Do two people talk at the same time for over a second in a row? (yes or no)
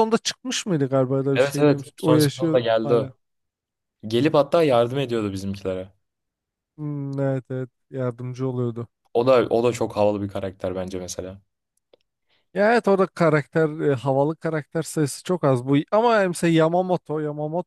yes